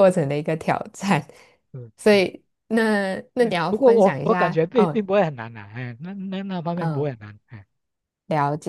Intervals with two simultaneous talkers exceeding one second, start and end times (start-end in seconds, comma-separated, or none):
3.4-5.0